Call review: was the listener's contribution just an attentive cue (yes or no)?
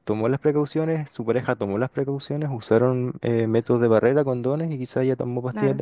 yes